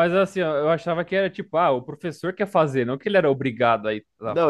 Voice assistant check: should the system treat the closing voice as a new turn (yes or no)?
yes